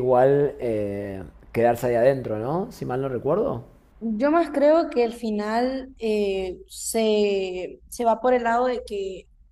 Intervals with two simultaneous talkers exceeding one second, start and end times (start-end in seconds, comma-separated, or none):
none